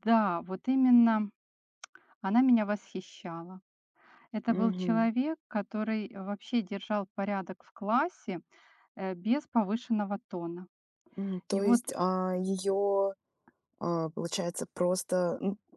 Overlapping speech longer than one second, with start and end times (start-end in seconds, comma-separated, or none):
none